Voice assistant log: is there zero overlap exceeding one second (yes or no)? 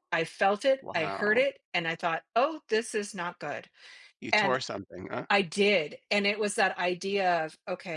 yes